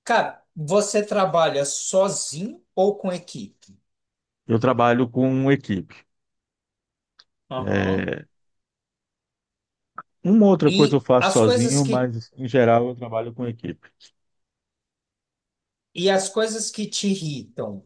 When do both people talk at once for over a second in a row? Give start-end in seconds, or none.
10.6-12.1